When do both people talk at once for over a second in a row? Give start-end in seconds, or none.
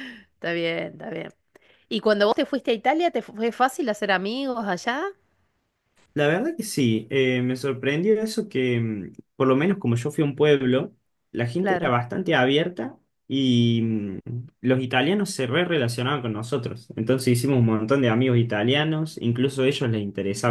none